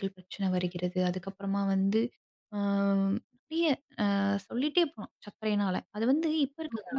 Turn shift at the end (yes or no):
yes